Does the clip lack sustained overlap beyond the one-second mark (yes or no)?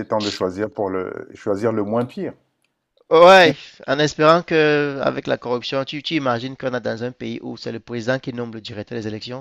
yes